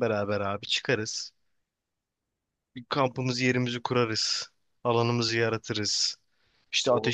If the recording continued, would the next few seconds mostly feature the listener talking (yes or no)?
no